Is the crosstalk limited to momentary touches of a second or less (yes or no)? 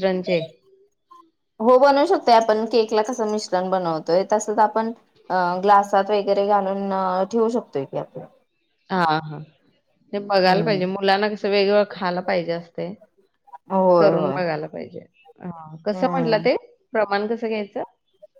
yes